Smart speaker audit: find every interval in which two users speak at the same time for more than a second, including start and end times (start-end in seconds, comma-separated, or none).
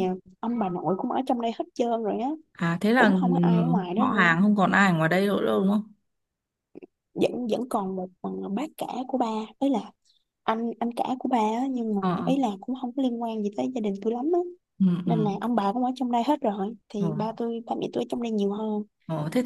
2.9-4.3